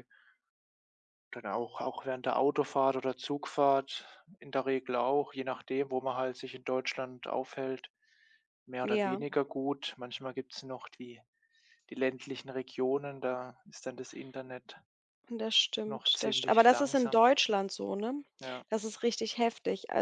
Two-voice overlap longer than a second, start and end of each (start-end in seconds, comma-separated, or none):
15.8-17.2